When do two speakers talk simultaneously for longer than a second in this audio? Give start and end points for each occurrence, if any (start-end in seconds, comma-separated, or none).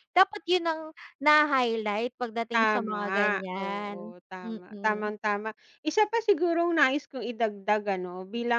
2.5-5.1